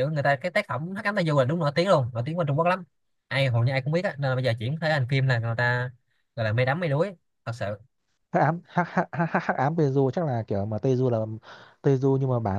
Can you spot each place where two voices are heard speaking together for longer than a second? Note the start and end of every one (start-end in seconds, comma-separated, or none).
none